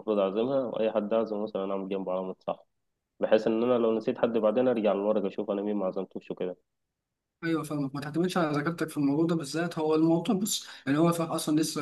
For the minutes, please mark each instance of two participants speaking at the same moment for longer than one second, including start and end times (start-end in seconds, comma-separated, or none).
none